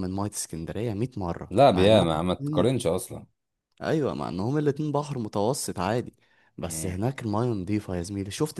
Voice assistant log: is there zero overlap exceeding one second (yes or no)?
no